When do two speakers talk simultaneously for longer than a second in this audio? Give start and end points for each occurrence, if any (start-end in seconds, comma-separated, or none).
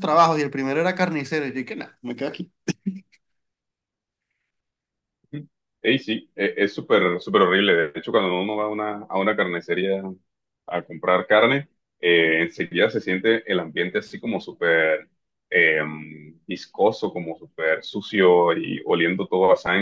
none